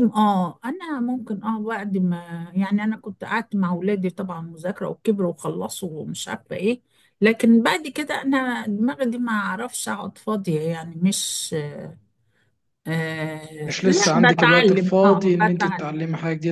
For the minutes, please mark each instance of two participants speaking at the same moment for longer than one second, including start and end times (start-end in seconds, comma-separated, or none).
13.6-15.9